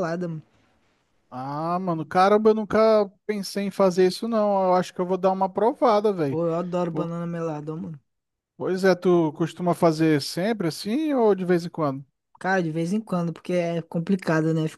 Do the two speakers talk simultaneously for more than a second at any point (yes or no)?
no